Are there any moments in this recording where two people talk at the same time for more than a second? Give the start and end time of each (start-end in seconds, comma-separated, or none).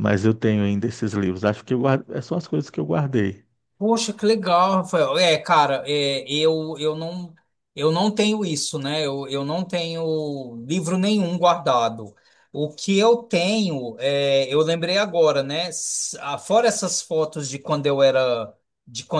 none